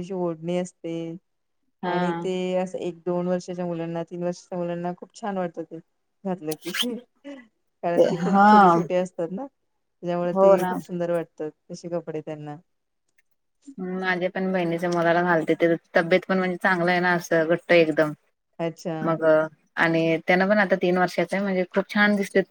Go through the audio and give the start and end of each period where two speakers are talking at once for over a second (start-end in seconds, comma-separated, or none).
none